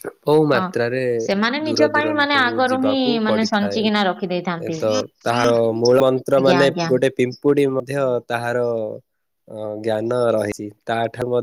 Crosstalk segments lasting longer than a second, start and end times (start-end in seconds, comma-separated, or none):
1.7-3.8